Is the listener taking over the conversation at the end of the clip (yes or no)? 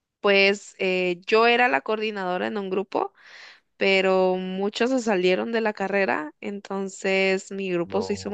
no